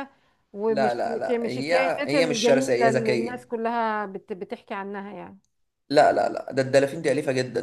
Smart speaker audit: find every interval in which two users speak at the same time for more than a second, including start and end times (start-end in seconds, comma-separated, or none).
0.7-3.5